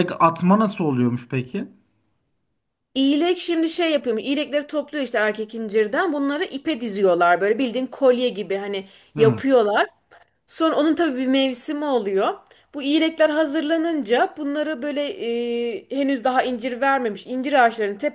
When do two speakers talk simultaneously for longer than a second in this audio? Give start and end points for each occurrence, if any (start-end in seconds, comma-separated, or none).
none